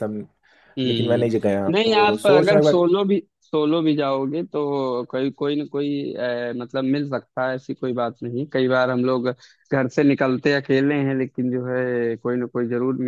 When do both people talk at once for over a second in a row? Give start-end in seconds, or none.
0.8-2.8